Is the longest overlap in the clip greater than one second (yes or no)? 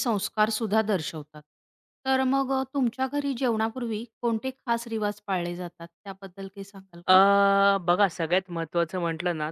no